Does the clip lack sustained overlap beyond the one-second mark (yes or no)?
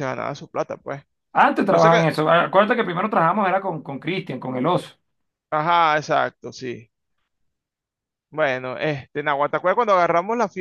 yes